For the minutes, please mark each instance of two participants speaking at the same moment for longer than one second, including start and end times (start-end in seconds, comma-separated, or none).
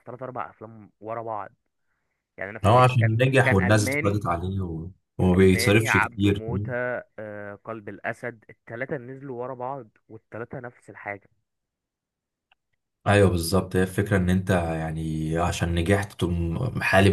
2.6-4.3, 5.2-6.4